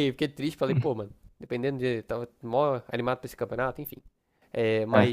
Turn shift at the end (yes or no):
no